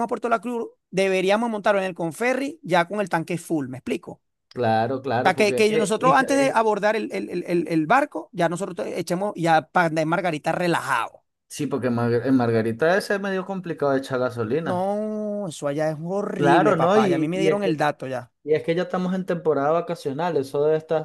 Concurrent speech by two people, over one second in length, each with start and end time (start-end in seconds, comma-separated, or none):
5.2-6.6, 16.4-17.8